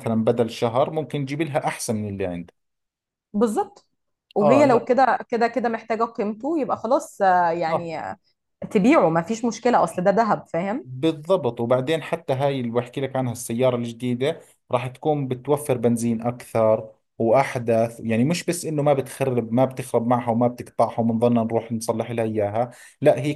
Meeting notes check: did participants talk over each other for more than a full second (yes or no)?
no